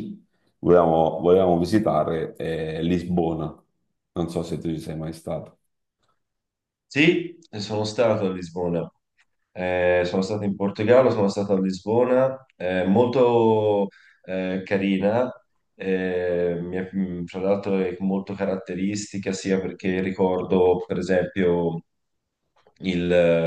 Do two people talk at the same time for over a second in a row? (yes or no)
no